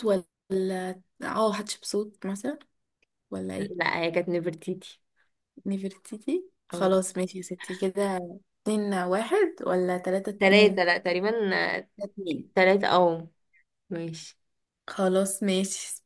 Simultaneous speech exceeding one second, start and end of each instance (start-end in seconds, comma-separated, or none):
none